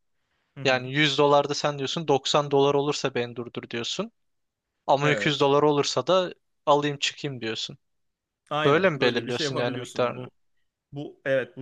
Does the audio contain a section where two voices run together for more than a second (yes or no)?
yes